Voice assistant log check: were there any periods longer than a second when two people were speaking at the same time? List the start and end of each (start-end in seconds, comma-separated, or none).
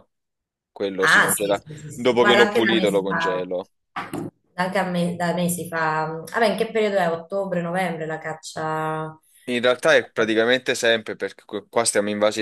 1.0-3.5